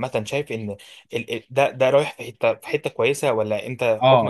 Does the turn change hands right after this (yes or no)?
yes